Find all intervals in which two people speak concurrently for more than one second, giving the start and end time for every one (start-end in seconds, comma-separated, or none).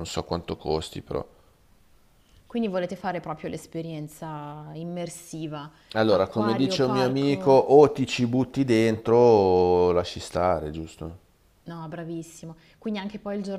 6.1-7.6